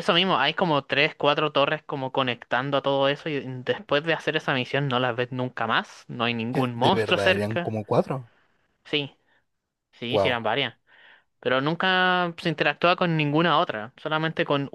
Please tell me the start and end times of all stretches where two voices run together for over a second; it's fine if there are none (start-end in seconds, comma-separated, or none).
6.5-7.7